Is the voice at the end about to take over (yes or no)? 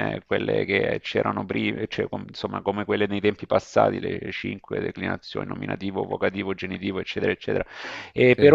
no